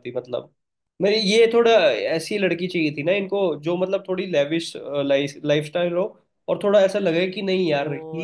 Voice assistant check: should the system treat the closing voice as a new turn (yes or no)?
yes